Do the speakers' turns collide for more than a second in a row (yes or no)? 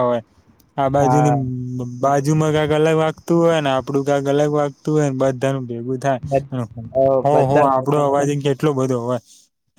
yes